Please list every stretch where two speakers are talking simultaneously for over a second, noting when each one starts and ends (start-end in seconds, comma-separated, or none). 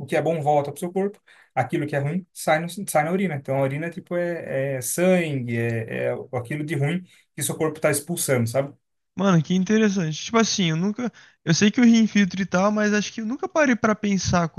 none